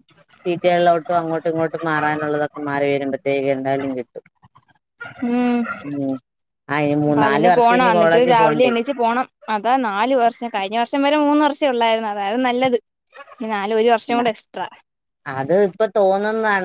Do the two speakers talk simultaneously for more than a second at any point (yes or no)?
yes